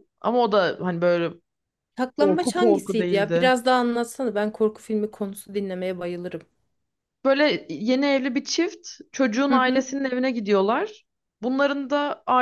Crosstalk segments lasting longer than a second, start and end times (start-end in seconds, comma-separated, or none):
2.2-3.5